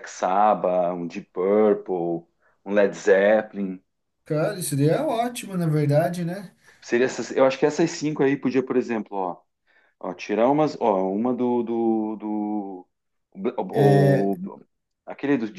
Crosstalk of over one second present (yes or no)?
no